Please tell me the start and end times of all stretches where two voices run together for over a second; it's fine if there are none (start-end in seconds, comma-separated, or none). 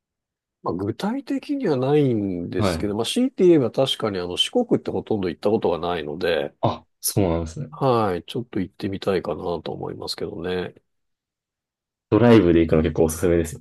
none